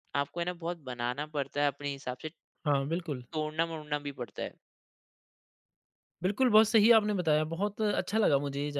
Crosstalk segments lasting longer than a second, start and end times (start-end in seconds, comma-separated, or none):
none